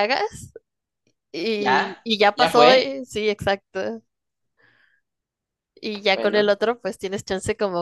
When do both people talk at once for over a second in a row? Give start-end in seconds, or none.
1.6-3.0